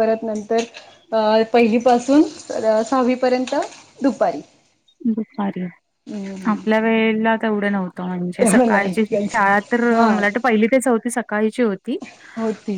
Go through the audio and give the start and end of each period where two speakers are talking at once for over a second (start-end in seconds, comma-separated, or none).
8.4-10.1